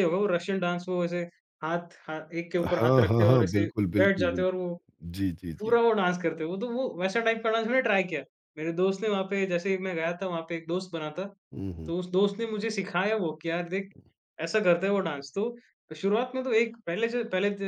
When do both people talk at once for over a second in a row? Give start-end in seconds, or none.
2.7-4.4